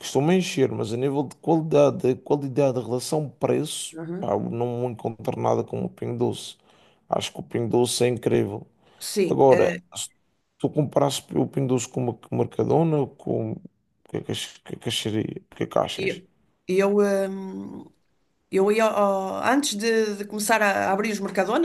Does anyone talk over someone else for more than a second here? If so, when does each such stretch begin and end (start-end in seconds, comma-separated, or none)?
none